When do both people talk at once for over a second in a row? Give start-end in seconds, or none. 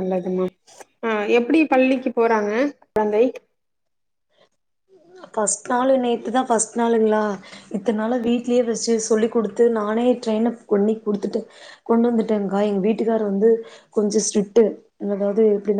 none